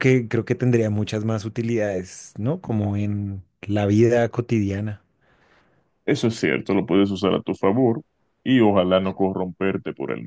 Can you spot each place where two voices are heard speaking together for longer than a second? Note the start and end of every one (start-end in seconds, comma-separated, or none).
none